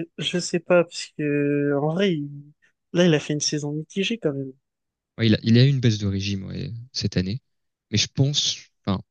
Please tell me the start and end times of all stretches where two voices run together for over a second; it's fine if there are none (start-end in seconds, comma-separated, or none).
none